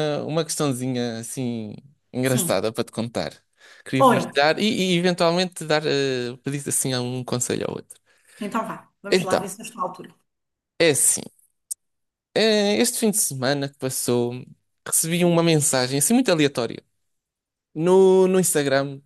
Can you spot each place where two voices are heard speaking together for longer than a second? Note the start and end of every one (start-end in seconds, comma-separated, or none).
none